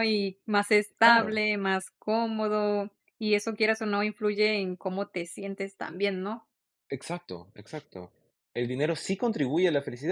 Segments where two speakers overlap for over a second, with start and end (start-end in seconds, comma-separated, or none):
none